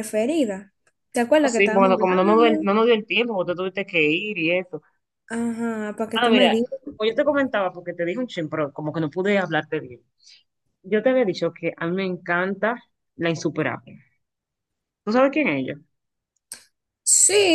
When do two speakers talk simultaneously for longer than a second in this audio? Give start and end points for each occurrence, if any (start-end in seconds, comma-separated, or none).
1.3-2.7